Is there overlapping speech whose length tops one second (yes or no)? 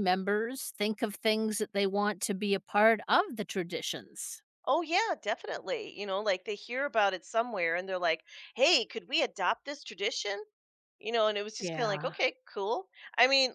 no